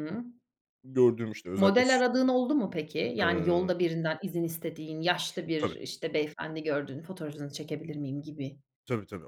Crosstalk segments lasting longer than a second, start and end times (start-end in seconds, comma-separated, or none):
none